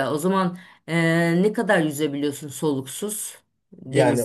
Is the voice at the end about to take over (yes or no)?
yes